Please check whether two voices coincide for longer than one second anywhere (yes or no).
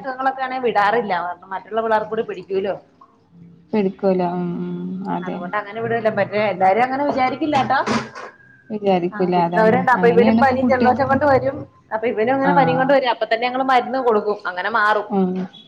yes